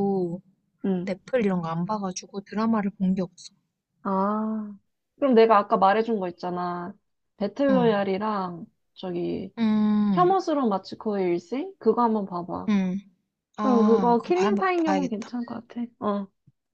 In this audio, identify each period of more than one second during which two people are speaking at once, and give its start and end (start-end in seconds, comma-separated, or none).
13.6-15.3